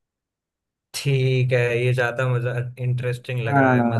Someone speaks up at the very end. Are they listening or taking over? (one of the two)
taking over